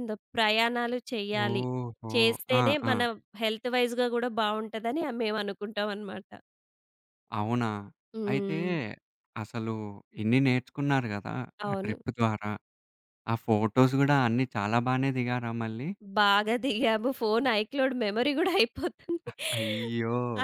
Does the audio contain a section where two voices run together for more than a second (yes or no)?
no